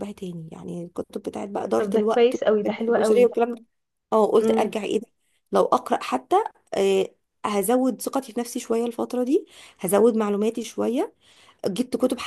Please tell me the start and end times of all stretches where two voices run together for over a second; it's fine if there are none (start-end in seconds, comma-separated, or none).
1.8-3.3